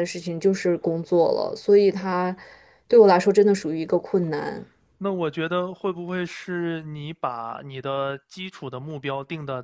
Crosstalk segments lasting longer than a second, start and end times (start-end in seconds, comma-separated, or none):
none